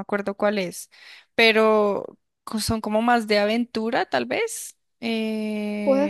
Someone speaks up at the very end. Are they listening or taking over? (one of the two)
taking over